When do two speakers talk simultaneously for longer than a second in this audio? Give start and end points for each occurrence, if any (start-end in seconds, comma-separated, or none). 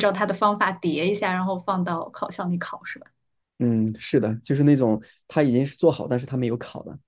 none